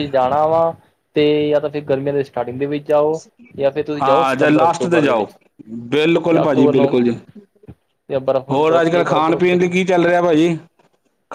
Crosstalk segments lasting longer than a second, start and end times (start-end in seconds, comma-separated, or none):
4.0-5.3, 8.5-9.7